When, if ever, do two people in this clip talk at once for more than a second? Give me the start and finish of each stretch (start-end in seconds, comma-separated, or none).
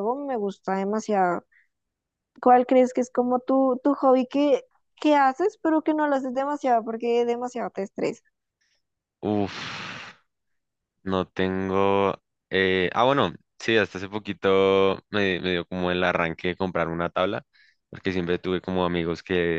none